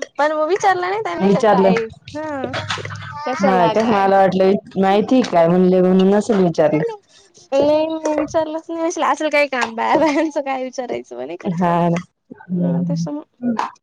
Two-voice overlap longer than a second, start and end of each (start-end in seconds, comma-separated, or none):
none